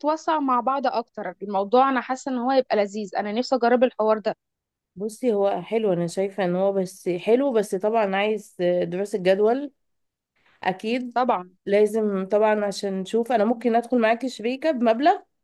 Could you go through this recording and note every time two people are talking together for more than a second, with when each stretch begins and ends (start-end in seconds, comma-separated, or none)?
none